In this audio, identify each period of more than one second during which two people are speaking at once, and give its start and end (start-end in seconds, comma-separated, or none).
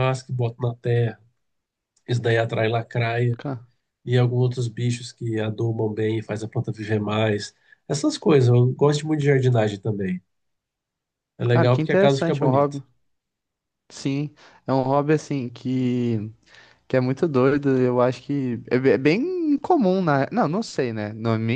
11.5-12.8